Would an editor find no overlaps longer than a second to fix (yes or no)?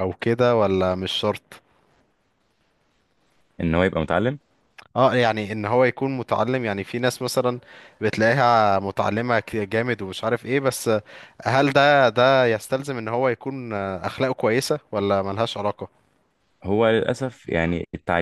yes